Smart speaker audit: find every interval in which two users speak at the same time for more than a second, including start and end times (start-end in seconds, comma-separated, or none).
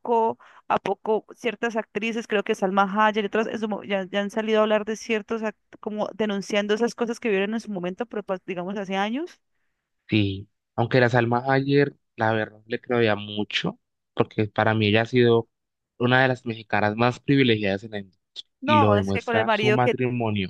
18.6-20.0